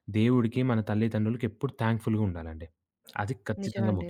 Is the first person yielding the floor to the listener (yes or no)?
no